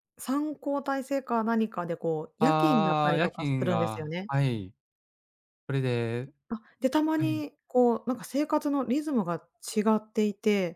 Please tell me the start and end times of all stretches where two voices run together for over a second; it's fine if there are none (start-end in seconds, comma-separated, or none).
2.4-4.3